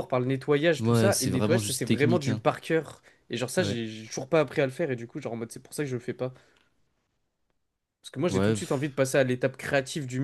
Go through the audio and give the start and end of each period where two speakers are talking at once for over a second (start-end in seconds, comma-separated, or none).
0.8-2.4